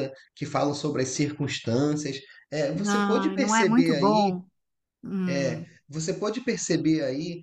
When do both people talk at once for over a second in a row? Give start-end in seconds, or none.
2.7-4.3